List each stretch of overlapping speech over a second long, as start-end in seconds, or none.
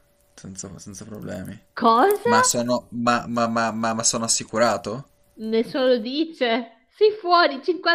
none